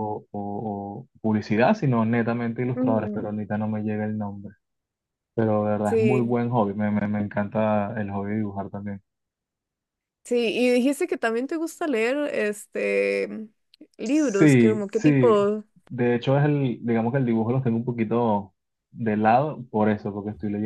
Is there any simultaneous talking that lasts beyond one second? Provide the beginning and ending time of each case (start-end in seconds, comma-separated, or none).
14.1-15.3